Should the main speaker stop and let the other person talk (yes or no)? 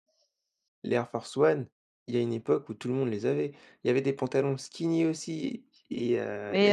yes